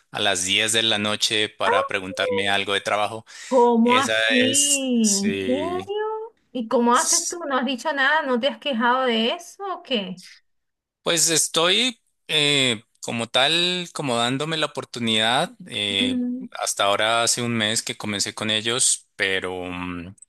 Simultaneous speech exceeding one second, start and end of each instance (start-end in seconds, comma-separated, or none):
3.8-5.9